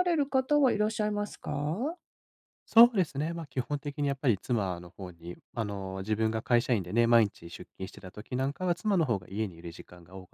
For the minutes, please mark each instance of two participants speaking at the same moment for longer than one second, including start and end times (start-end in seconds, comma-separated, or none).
none